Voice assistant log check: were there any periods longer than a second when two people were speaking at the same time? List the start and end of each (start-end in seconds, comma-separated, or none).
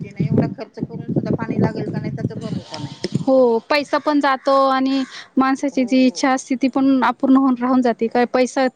none